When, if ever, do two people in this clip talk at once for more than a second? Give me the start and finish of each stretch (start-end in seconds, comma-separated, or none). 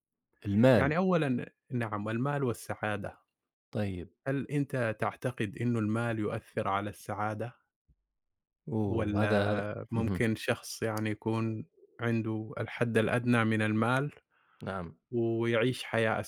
8.9-10.3